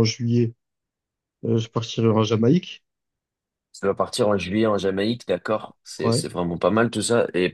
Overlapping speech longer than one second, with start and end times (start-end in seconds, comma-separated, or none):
none